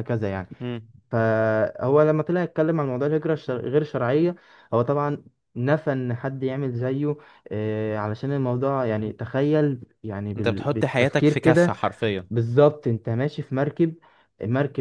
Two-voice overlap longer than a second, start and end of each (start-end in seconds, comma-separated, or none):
10.4-11.7